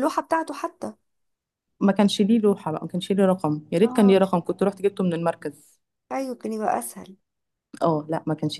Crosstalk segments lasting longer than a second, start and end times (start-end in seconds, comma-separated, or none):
none